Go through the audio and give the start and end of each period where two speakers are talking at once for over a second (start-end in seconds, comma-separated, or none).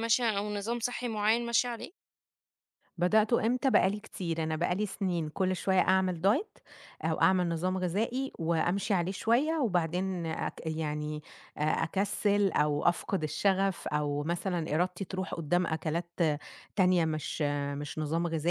none